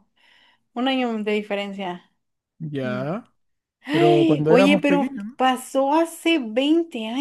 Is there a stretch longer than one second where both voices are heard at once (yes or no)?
yes